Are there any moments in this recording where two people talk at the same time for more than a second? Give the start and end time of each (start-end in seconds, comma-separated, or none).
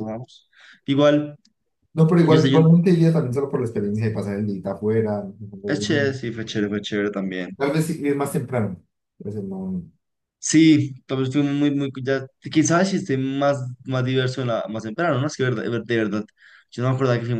none